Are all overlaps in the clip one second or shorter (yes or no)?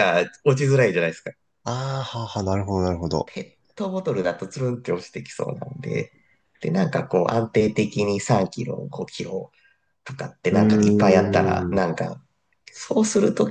no